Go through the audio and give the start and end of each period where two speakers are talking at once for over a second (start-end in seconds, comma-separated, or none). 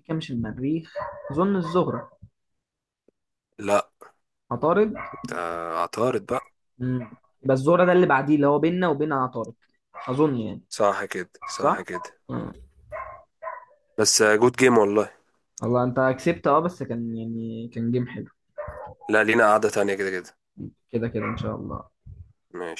none